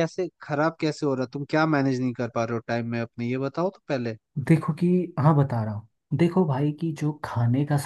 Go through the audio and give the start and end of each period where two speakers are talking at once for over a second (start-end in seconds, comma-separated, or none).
none